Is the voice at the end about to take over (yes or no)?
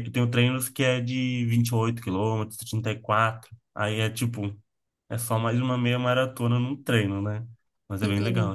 yes